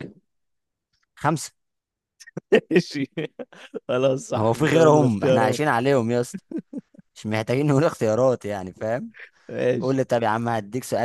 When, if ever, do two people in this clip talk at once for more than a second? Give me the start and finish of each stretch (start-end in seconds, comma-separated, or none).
4.4-5.6